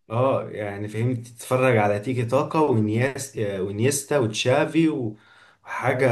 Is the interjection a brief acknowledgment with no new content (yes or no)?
yes